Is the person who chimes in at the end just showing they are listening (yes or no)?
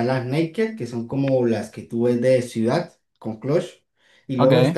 yes